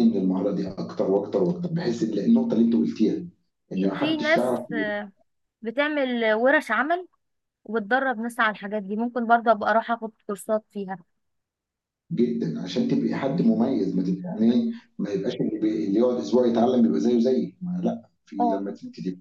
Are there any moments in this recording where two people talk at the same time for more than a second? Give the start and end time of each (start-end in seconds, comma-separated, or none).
none